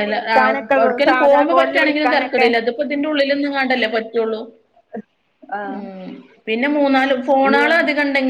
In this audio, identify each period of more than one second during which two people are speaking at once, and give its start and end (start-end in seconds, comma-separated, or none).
0.8-2.5